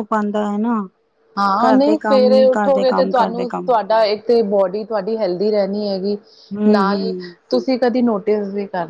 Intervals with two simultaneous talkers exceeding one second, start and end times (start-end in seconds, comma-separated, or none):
1.6-3.7